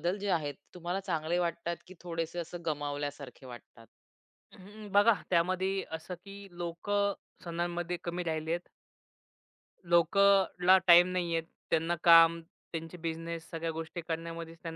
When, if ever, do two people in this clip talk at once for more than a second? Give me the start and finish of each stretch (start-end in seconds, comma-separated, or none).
none